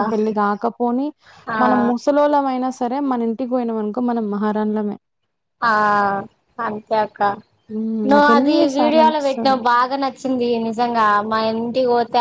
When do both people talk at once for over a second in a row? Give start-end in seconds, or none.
8.1-9.6